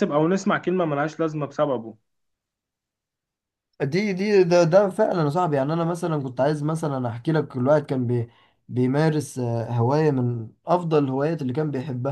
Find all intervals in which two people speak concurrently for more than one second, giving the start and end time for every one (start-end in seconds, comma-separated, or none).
none